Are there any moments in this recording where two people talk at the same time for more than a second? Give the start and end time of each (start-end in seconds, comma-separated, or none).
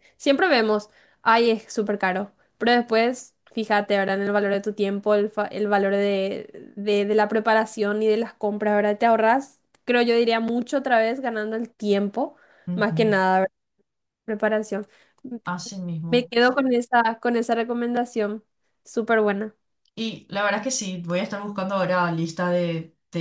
none